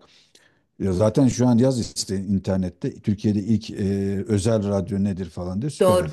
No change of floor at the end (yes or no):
no